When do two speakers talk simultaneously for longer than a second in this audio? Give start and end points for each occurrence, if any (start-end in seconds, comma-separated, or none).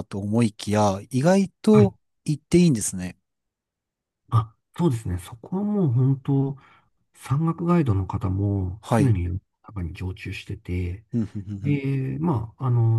none